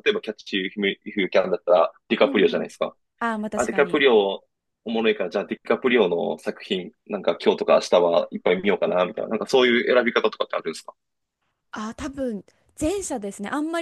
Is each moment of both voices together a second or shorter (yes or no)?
yes